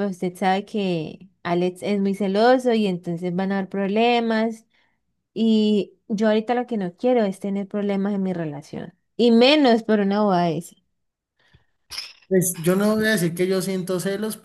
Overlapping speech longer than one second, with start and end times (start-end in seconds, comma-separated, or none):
none